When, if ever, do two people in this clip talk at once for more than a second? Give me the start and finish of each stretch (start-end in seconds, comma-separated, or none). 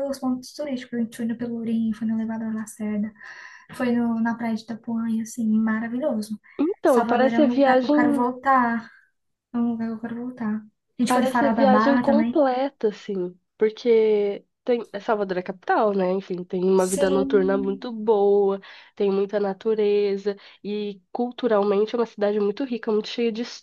6.8-8.2, 11.0-12.4